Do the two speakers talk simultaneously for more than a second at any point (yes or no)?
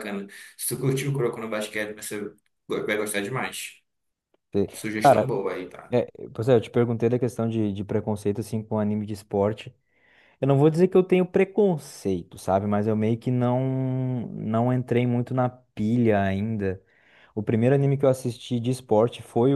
no